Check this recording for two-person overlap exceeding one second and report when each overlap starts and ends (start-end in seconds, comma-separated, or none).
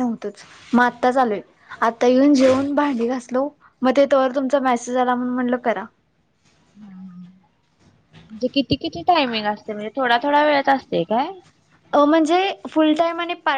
none